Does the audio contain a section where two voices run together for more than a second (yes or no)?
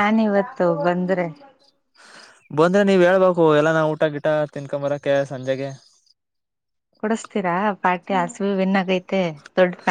no